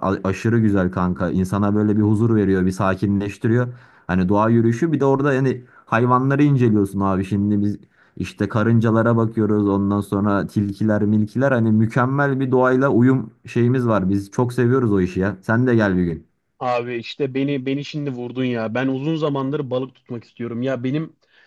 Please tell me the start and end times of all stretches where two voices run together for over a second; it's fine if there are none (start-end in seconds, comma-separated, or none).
none